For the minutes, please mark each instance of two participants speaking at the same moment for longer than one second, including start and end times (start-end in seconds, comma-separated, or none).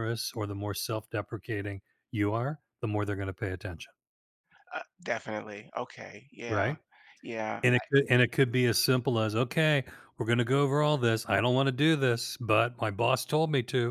none